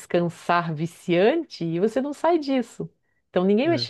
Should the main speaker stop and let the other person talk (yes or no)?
no